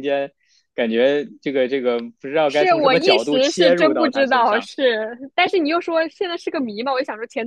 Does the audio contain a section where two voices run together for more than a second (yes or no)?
yes